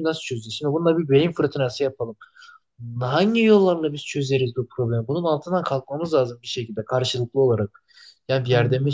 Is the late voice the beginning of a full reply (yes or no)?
no